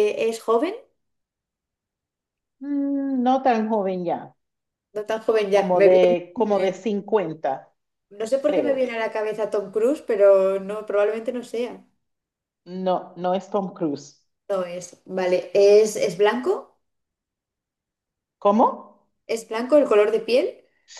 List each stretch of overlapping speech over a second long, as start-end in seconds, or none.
5.5-6.8